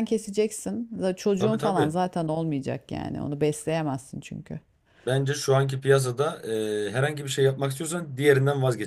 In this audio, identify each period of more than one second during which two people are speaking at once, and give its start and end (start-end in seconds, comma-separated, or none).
none